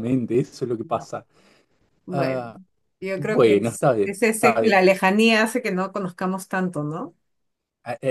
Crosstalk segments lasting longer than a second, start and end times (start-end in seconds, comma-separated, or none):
3.2-4.8